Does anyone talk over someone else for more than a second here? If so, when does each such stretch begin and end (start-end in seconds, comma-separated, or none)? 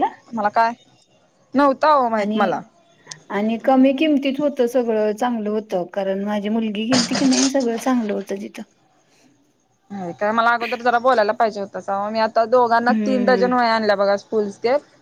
none